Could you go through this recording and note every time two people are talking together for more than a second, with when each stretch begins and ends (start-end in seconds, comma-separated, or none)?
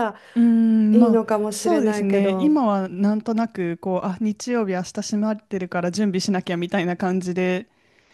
0.9-2.6